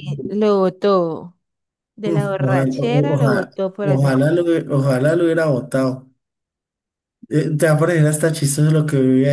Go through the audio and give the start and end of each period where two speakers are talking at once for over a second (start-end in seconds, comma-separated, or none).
2.0-4.2